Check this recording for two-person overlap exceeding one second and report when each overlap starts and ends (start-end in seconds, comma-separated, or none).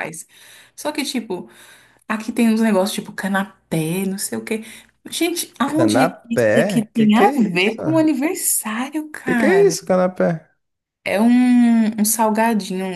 5.7-7.8